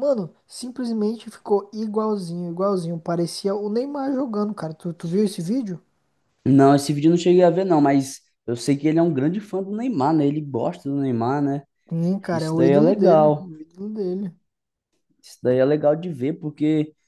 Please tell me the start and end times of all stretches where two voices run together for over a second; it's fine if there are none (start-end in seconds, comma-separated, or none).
12.3-13.5